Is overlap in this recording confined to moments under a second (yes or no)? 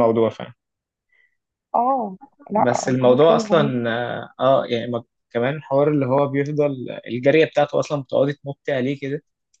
no